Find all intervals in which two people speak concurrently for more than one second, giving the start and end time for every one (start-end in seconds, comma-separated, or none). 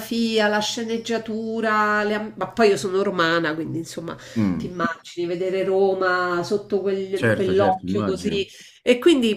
7.1-8.4